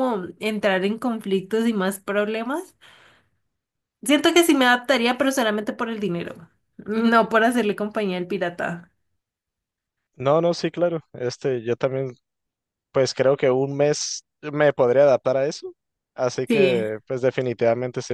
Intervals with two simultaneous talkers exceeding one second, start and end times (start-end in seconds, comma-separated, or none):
none